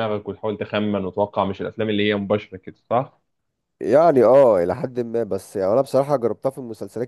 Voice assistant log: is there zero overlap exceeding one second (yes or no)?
yes